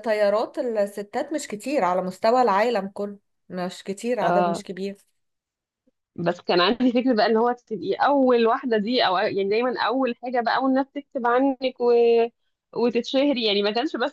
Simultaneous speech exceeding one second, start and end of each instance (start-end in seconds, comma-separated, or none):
none